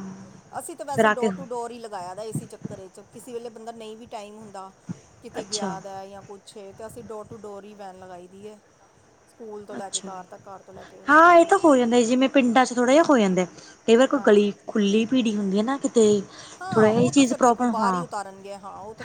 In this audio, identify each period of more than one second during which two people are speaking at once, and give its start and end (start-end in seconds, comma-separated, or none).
16.7-18.0